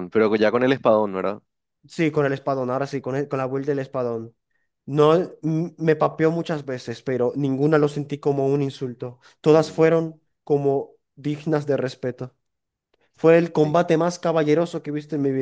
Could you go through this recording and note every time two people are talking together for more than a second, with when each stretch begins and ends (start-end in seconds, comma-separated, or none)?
none